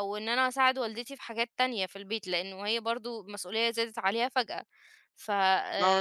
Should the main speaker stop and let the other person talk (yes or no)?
yes